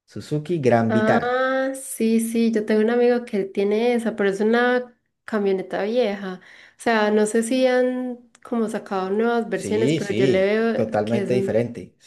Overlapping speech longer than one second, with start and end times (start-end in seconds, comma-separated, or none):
9.5-11.5